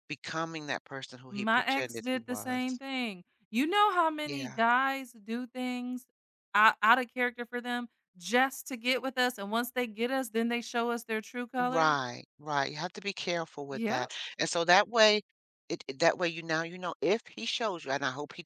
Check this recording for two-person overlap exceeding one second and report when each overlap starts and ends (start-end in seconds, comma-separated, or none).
1.3-2.8